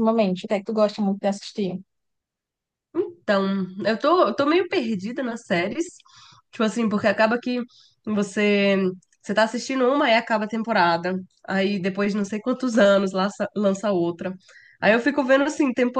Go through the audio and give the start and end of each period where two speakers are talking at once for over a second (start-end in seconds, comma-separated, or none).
none